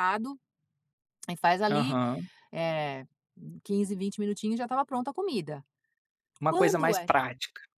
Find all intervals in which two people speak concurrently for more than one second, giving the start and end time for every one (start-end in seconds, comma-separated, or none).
none